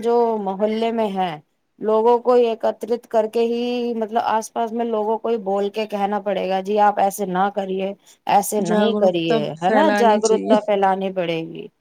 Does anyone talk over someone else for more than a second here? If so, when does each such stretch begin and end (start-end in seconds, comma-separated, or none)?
8.7-10.5